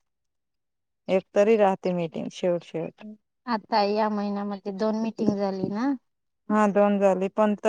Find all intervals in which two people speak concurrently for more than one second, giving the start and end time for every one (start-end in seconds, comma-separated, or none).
none